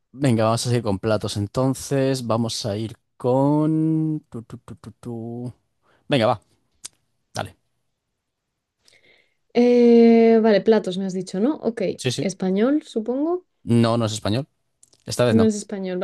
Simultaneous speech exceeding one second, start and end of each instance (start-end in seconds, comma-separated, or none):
none